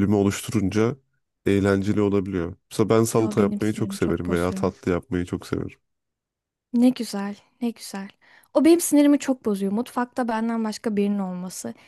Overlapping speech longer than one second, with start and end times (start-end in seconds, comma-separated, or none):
3.2-4.7